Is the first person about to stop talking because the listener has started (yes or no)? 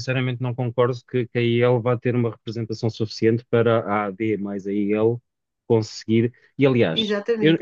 no